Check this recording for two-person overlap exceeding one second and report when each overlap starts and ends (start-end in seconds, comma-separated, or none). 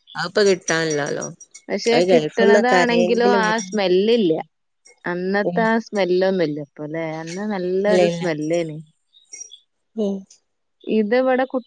1.9-3.7